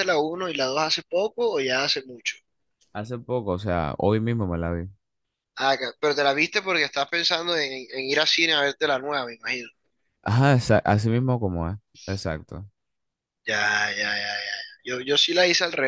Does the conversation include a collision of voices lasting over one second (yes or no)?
no